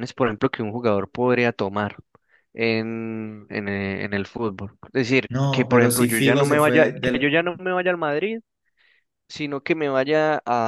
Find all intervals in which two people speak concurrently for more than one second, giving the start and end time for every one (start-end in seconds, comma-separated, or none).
5.3-7.3